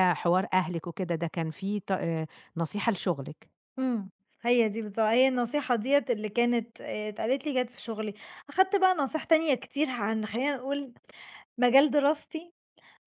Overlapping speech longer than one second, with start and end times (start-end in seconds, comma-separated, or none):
none